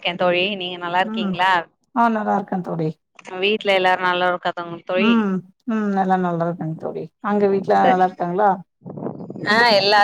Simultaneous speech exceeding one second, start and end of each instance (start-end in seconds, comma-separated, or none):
none